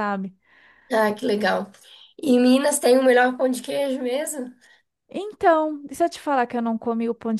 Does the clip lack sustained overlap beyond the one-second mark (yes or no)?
yes